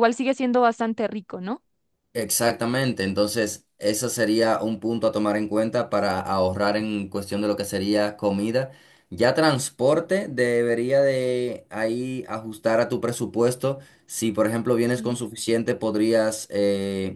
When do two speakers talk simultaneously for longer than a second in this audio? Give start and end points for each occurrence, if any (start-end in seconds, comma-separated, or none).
none